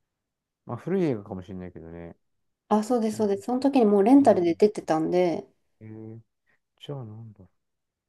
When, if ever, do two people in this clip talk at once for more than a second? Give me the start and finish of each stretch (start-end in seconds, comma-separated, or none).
none